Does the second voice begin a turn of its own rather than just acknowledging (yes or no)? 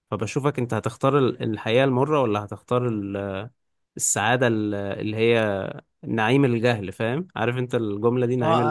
yes